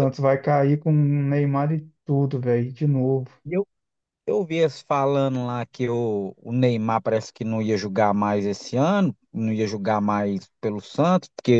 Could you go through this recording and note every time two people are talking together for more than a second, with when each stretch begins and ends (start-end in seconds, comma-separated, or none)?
none